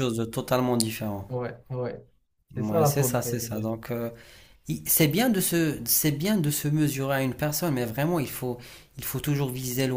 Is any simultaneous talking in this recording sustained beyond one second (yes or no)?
yes